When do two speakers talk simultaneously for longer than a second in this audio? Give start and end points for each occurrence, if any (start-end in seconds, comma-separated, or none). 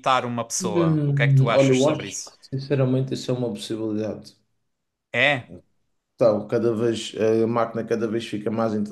0.6-2.3